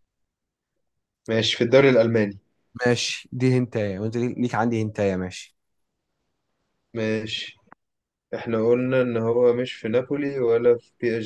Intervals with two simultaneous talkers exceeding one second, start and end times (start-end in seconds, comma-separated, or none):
none